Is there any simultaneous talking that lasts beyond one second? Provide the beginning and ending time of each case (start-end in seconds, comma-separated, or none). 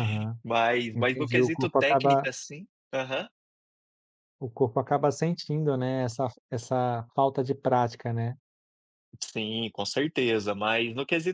0.9-2.3